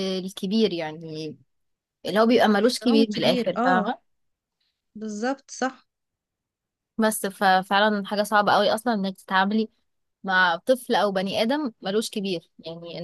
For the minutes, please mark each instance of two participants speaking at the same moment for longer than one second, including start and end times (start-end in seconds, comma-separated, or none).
2.6-3.9